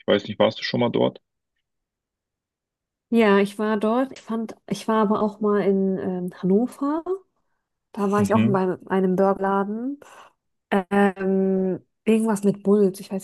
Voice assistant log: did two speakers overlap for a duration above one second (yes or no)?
no